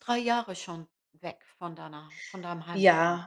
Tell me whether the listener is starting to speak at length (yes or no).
yes